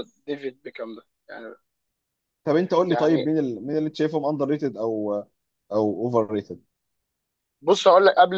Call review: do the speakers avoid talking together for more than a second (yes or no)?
yes